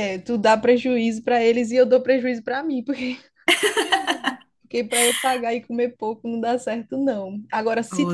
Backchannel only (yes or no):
yes